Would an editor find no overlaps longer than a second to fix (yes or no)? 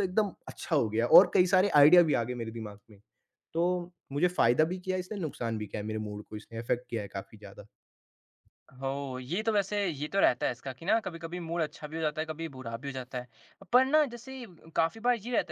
yes